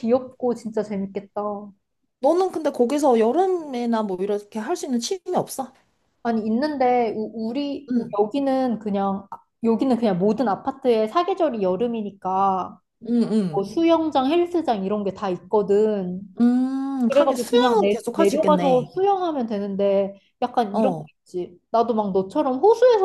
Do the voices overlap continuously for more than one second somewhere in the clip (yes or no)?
yes